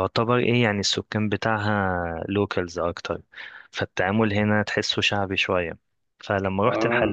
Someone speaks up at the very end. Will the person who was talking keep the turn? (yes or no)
yes